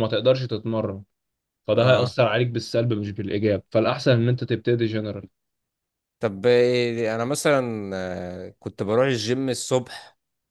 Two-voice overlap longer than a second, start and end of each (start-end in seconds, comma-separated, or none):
none